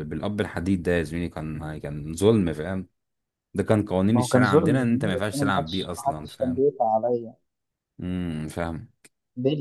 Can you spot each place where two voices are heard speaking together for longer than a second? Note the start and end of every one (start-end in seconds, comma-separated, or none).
4.1-6.7